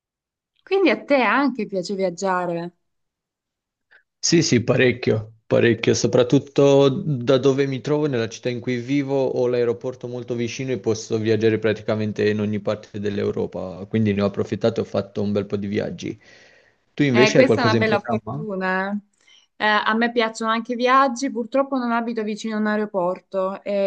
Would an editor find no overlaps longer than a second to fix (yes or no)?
no